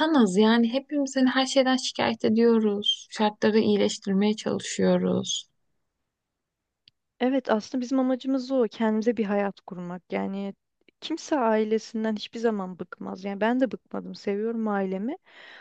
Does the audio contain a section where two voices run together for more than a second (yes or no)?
no